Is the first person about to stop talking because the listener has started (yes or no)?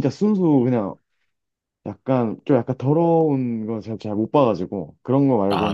no